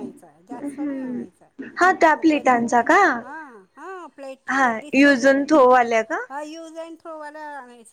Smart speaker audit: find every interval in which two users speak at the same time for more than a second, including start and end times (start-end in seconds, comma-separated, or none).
0.5-2.8